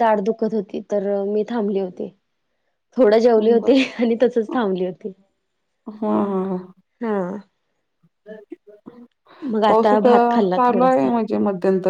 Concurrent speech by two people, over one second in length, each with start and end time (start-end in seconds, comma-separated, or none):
9.7-11.1